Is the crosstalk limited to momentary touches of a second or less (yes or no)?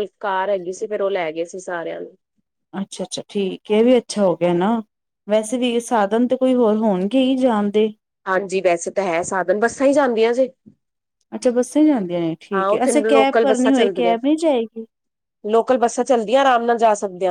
no